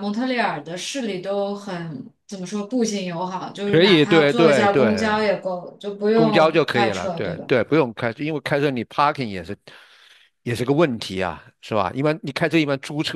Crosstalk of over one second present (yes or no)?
yes